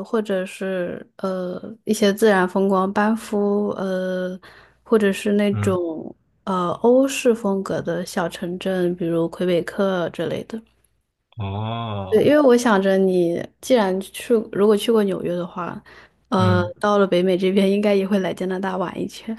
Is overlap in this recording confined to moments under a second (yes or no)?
yes